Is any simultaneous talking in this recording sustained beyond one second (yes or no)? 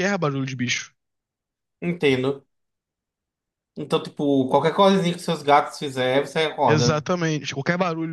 no